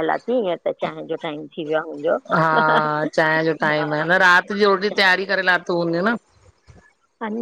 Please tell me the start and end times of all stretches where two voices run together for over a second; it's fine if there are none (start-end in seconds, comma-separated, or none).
none